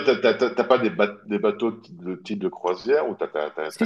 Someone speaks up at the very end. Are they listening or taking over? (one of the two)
listening